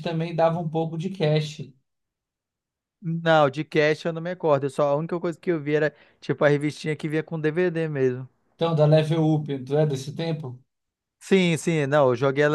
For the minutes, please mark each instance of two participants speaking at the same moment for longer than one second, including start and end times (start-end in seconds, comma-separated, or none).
none